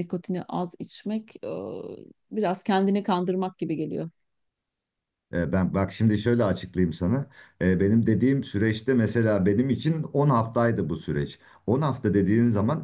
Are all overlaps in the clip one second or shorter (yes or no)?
yes